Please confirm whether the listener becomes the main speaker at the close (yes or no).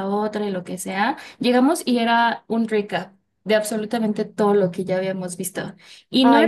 no